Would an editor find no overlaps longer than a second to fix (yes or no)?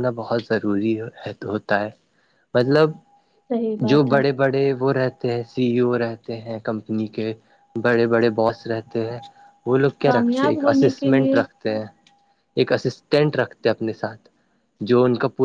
no